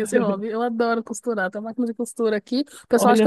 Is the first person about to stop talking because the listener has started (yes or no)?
no